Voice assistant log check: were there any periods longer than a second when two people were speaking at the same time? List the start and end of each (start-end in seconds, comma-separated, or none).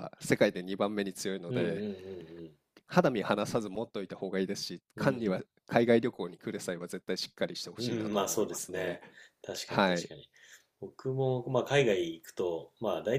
7.8-9.0